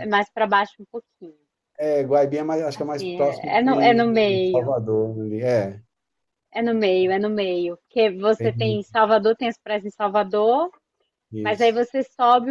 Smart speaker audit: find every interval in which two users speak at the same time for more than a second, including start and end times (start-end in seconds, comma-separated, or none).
2.7-4.7